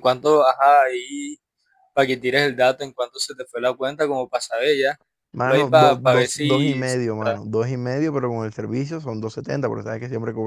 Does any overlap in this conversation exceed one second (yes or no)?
yes